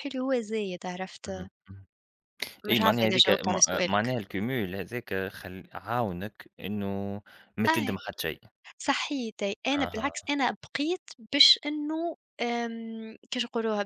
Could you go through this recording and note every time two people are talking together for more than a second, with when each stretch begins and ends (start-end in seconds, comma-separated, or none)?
2.7-4.1